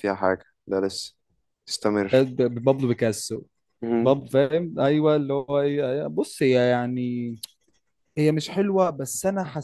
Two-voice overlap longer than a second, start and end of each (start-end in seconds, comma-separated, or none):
none